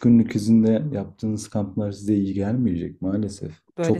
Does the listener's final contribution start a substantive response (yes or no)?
yes